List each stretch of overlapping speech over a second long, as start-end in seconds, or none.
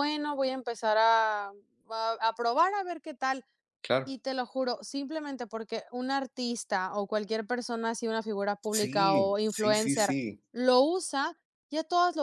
8.8-10.1